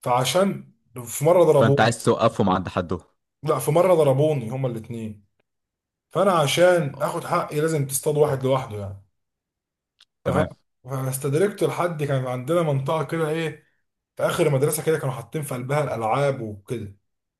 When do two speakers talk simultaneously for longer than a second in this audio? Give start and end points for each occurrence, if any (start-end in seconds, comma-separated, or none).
none